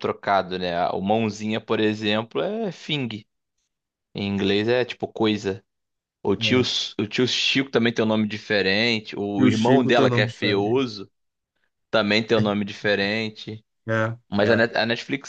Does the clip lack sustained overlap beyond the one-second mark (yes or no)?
no